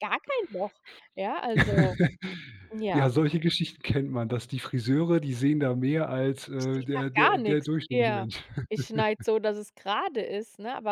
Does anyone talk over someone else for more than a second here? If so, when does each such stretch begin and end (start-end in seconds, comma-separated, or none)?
6.5-8.3